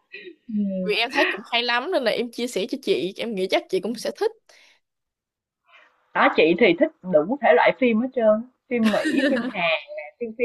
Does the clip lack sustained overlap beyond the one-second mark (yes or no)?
yes